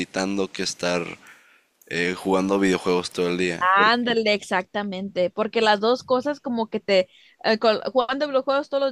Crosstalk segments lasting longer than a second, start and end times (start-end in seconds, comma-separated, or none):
none